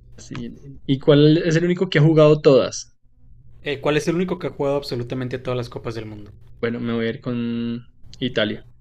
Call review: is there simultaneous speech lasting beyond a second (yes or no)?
no